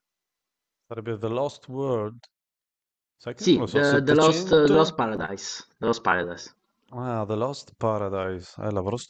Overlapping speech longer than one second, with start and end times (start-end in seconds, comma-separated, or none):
3.4-5.0